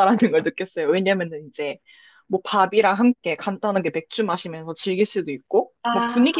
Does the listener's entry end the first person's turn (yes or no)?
no